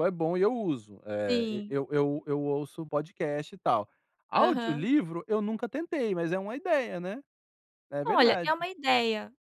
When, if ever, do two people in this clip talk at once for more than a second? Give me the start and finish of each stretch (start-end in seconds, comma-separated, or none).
none